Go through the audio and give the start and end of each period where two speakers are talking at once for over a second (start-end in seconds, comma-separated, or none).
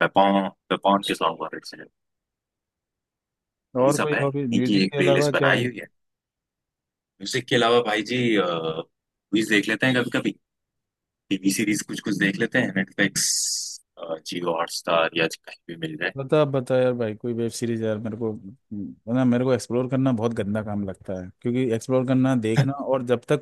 3.8-5.6